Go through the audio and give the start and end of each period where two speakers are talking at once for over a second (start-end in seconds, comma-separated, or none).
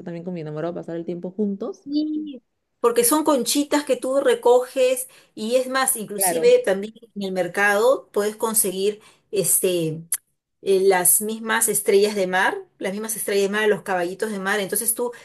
none